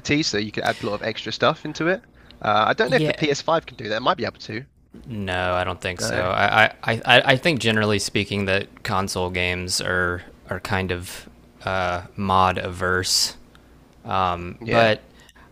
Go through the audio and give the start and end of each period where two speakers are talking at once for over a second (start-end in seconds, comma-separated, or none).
none